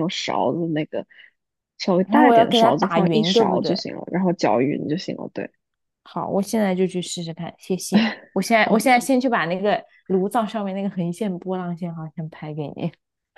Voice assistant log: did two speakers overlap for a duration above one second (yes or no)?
yes